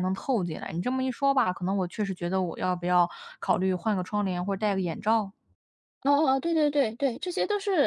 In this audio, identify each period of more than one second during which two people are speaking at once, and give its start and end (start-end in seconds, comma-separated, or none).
none